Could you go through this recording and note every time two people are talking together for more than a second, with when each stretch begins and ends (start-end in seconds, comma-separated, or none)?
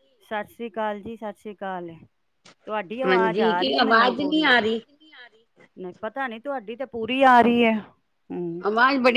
3.1-4.8